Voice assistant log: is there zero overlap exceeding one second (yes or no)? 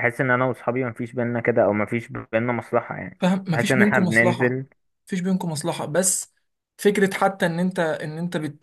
no